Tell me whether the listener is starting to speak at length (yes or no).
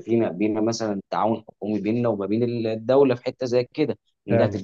no